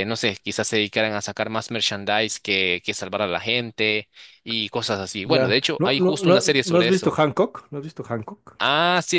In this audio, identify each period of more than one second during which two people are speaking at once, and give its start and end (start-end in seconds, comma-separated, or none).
5.2-7.2